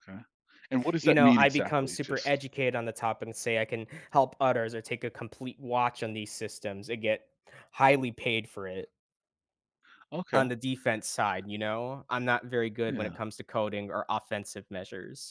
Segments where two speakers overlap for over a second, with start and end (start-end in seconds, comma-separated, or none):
1.0-2.4